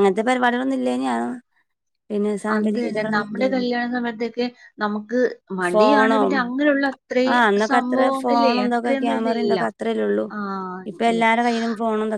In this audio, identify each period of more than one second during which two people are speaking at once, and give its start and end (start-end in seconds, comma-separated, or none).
7.7-9.6